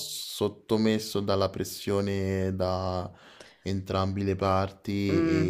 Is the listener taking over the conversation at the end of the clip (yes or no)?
yes